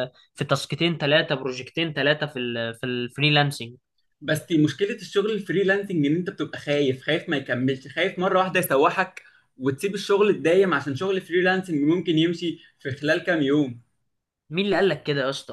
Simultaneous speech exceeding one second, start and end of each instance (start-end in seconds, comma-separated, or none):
none